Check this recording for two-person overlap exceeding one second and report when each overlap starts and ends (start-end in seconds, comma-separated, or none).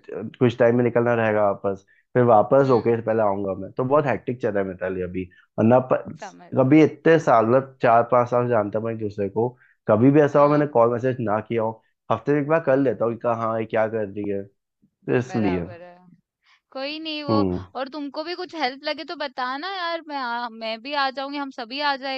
none